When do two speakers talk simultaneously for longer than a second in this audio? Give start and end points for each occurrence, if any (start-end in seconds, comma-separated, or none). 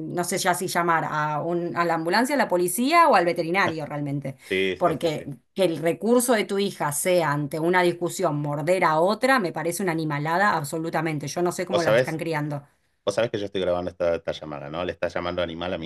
none